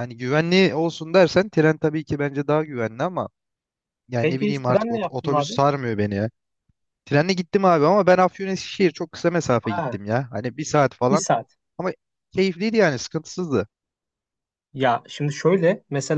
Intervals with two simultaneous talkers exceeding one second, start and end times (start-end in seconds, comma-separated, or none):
4.2-5.6